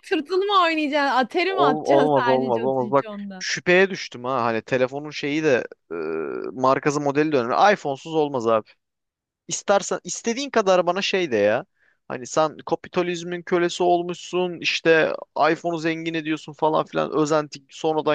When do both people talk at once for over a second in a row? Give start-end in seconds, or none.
1.4-3.5